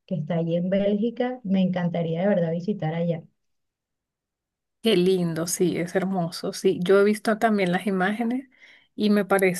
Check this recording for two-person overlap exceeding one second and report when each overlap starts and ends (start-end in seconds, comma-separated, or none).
none